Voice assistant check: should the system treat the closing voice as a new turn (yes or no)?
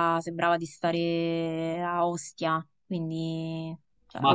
no